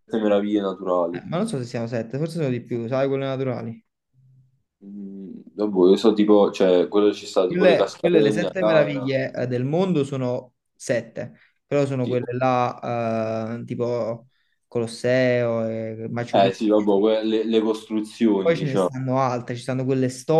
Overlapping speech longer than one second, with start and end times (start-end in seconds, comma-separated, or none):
7.5-9.1